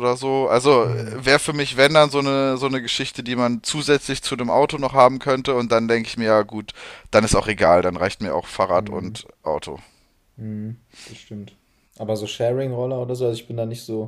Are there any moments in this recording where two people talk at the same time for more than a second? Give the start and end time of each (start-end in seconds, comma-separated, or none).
none